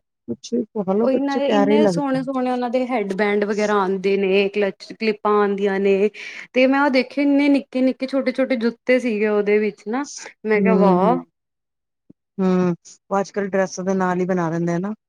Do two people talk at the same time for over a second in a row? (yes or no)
yes